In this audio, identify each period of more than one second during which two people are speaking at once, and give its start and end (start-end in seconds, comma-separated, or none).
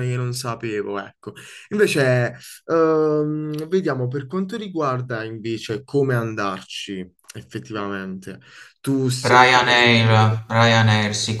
none